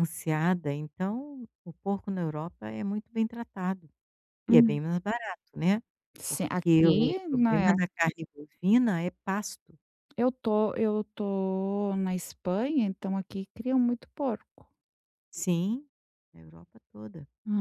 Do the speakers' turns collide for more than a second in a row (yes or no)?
yes